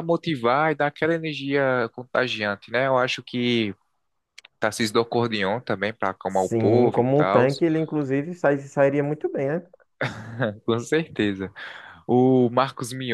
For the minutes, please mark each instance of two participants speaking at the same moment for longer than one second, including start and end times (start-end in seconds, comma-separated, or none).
6.3-7.5